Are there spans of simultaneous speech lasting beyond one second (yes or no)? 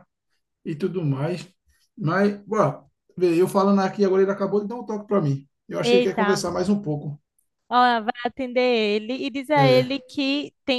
no